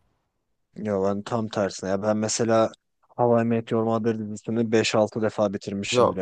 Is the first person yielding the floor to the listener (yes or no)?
yes